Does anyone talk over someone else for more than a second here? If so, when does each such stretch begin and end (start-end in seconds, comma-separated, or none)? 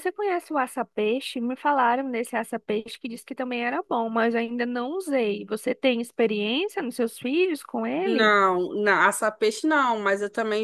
none